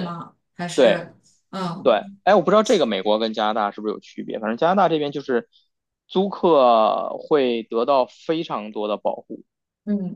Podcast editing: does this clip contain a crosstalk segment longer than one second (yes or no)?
no